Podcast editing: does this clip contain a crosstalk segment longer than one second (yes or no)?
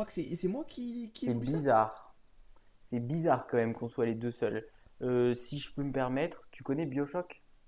no